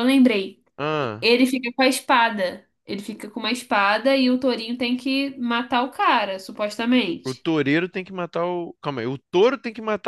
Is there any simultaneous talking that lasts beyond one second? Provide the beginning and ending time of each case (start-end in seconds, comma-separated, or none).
none